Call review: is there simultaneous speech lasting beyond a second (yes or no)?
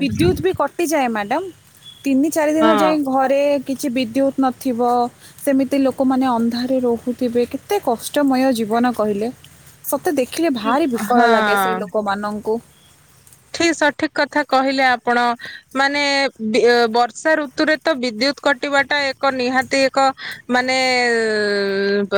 no